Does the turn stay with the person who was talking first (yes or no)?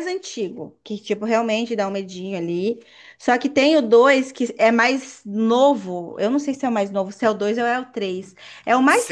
no